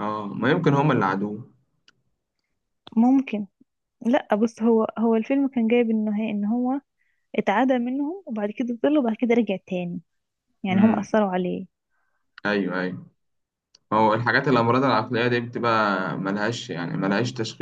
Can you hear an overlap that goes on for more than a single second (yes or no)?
no